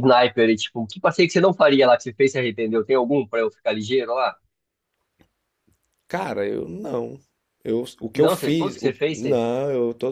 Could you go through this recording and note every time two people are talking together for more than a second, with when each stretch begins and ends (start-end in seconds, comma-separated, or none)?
8.1-9.4